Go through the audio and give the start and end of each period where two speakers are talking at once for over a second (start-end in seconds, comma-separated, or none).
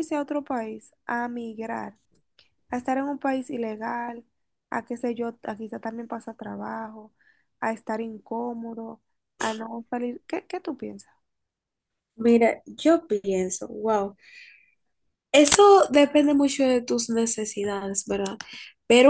none